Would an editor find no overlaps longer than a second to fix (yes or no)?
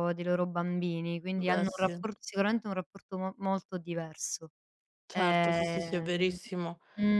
no